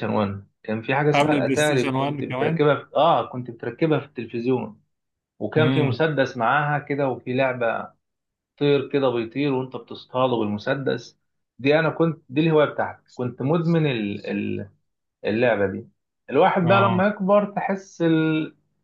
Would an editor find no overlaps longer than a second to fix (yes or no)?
no